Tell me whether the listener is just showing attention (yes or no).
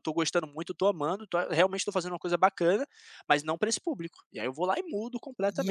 no